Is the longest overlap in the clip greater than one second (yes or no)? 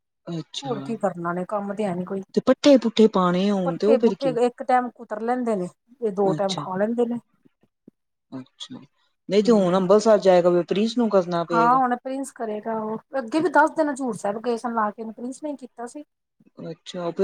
no